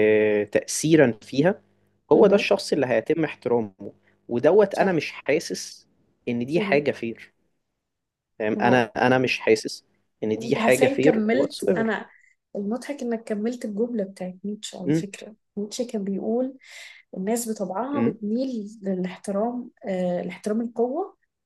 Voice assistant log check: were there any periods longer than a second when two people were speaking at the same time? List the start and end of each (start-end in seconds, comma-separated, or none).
10.4-11.9